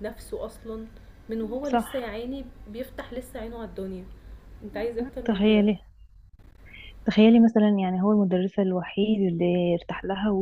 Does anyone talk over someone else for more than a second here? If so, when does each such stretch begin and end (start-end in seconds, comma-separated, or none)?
none